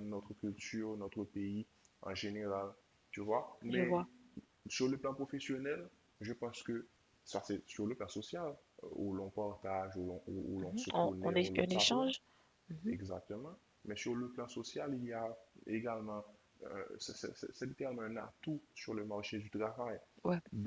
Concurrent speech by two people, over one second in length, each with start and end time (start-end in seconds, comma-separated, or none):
10.6-12.1